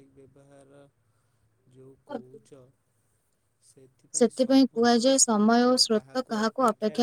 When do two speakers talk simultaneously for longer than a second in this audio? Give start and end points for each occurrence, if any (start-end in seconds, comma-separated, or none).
4.2-6.2